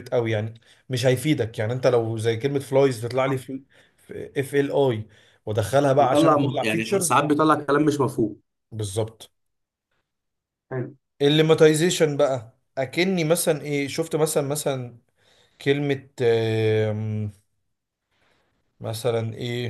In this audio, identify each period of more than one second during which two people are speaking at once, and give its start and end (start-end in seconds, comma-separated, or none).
6.0-7.2